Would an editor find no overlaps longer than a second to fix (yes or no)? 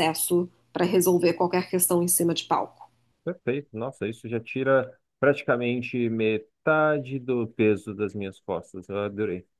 yes